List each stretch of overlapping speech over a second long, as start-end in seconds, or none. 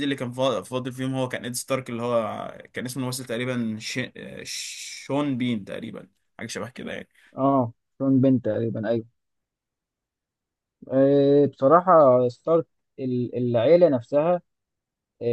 none